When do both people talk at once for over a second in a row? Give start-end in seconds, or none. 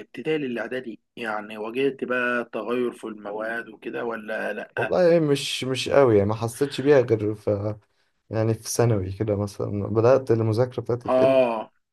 none